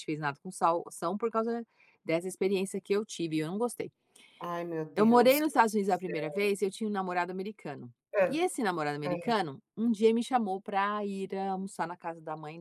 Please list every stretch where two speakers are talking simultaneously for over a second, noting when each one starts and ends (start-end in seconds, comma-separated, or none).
4.9-6.3